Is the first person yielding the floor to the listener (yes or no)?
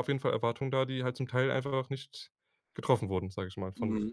yes